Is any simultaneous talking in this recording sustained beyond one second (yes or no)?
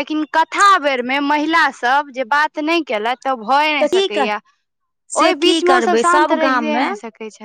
yes